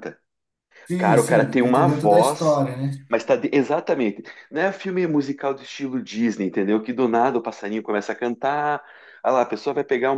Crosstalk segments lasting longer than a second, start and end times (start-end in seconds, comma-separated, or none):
1.0-2.6